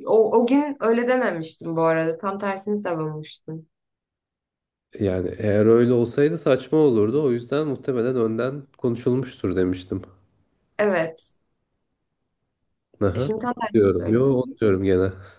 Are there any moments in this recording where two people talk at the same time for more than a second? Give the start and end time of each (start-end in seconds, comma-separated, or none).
13.1-14.6